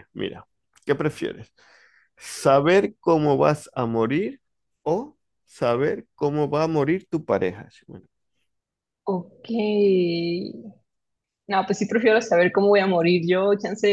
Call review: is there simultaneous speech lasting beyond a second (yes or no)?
no